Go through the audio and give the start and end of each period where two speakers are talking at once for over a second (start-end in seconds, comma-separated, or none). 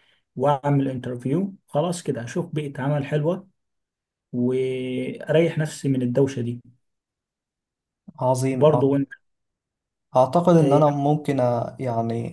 none